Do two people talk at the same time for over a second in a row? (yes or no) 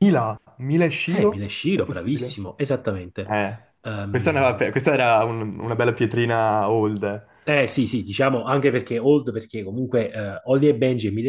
yes